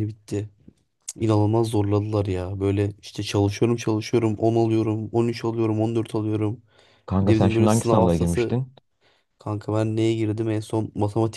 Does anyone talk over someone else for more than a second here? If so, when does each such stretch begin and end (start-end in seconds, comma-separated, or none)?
7.2-8.6